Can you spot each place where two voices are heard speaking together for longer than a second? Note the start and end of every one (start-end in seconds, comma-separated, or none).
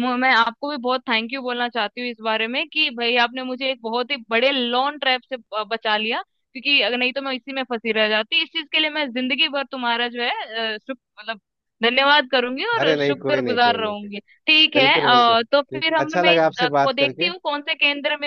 12.8-14.1, 14.7-17.3